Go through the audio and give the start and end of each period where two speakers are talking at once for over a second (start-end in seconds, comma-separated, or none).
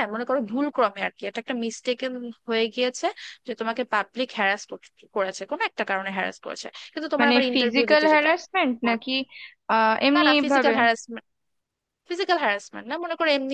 7.2-9.2